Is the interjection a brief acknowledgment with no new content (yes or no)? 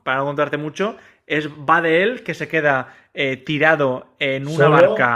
yes